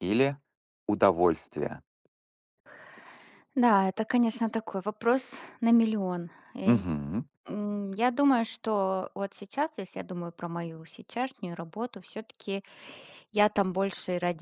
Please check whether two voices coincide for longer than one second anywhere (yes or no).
no